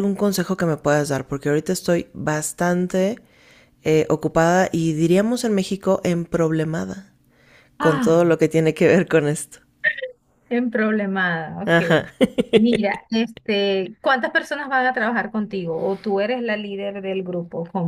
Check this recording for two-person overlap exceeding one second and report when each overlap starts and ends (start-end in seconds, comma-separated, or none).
none